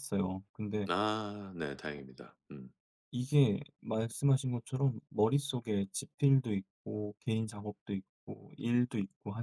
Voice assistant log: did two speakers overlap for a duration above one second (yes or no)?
no